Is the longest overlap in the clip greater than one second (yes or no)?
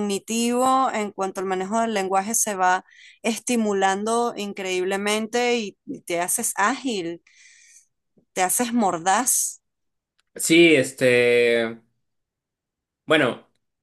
no